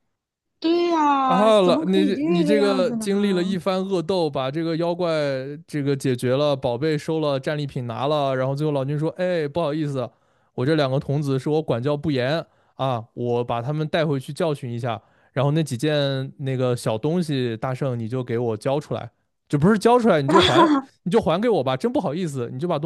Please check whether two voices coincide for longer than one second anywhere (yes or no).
yes